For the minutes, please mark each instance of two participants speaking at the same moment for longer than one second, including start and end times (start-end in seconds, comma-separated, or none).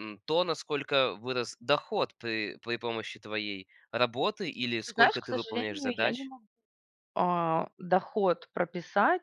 4.9-6.3